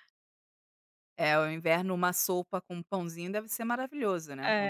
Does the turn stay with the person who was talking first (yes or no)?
no